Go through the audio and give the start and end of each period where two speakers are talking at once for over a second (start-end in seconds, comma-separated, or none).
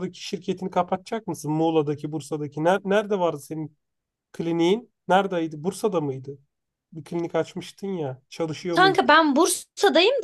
none